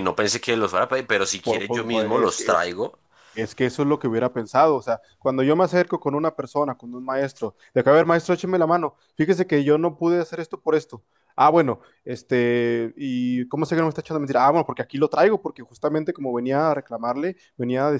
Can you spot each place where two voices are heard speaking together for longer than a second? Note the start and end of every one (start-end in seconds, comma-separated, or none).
1.4-2.7